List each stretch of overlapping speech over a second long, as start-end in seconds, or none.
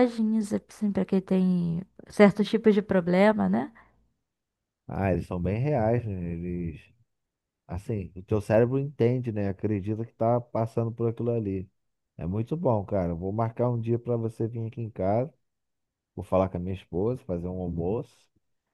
none